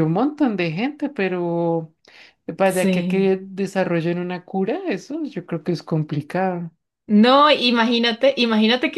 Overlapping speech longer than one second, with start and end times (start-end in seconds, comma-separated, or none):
none